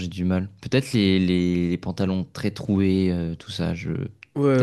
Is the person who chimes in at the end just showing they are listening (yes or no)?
no